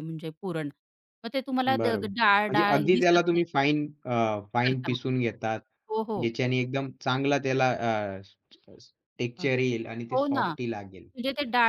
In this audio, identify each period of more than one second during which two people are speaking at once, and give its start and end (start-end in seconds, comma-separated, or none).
1.8-3.5